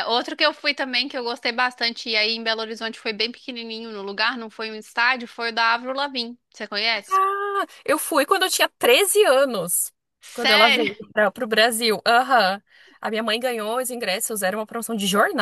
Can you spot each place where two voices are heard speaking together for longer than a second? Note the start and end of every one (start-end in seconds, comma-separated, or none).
none